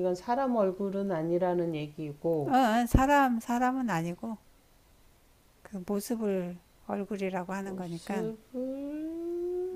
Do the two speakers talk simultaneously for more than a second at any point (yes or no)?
no